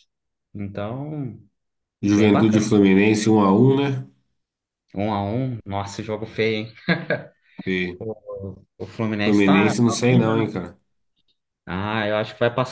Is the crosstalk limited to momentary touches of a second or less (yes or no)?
no